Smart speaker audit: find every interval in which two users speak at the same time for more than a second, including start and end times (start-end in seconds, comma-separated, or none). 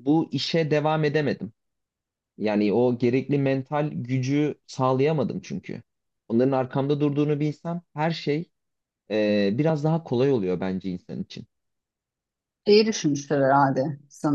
none